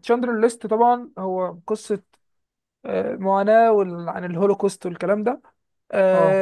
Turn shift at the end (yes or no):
no